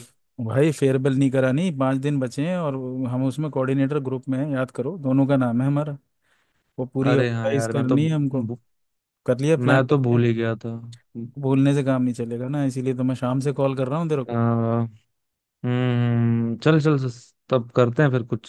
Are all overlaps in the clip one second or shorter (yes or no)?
no